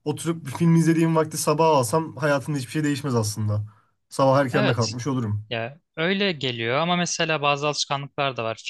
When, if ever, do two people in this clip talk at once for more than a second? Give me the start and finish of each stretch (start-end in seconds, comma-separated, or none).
none